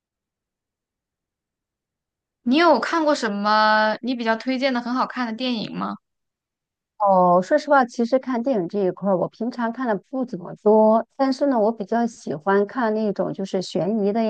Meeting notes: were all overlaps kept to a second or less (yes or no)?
yes